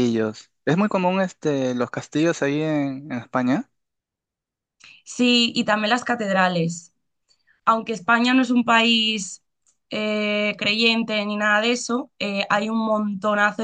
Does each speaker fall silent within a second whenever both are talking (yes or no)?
yes